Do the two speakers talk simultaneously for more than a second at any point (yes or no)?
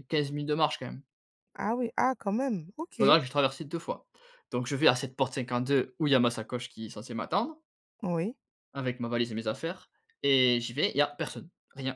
no